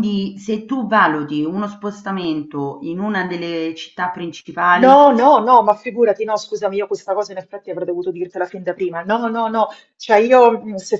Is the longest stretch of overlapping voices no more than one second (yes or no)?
yes